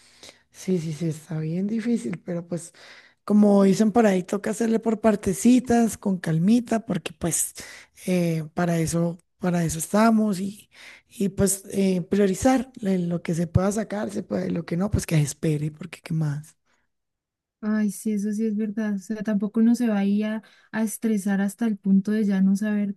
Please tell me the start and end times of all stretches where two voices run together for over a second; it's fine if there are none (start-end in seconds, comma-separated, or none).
none